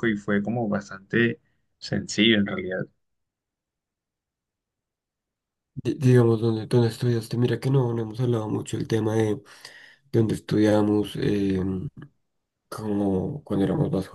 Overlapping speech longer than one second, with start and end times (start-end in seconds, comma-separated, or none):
none